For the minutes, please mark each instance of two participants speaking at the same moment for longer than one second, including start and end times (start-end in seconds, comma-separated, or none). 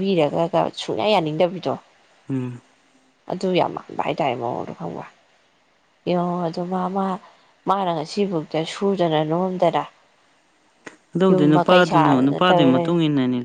11.3-12.9